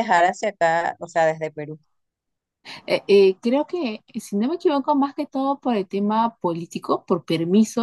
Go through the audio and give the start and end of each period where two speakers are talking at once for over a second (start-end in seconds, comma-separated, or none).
none